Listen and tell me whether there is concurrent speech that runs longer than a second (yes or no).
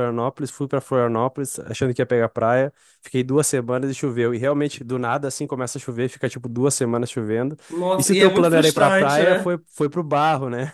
yes